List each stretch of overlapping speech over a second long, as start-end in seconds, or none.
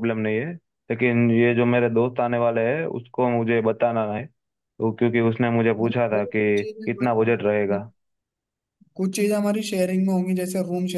5.8-7.8